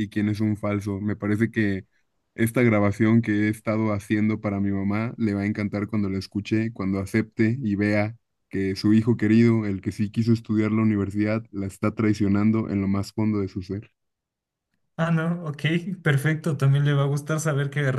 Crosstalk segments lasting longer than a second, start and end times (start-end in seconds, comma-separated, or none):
none